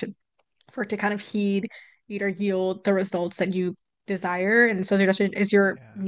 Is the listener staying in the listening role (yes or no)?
yes